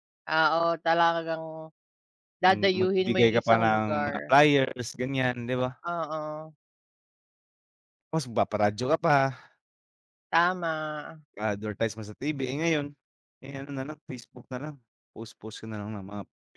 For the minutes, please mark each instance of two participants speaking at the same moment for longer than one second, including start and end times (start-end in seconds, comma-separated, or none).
2.5-4.3